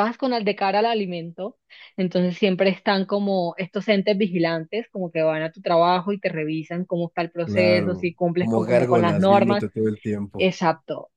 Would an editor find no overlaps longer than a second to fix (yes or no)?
no